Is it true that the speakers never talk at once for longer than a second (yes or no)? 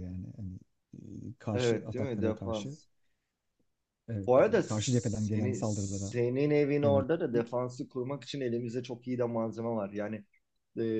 no